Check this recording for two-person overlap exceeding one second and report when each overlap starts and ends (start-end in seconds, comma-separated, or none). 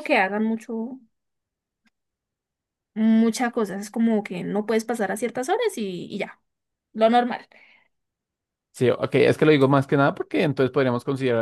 none